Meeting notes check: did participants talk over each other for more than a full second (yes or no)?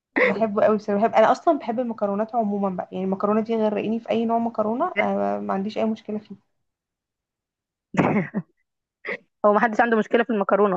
no